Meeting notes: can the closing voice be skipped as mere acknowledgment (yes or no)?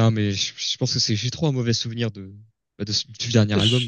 no